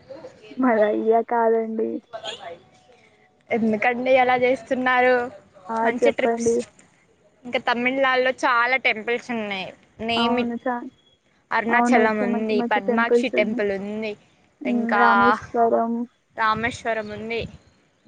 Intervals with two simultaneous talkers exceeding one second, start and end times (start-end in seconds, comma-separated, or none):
11.8-13.6